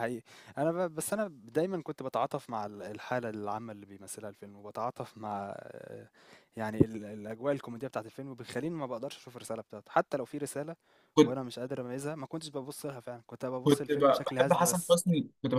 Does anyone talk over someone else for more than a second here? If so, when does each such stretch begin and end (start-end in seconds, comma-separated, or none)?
13.6-15.0